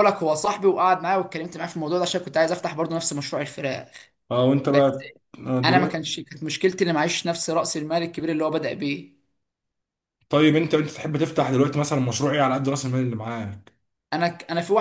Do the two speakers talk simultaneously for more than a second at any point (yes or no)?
no